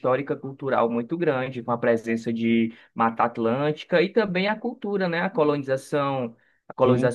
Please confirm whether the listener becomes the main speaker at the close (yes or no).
no